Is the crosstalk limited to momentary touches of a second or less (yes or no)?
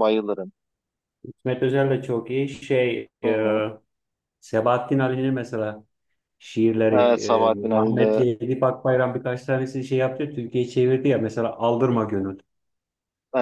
no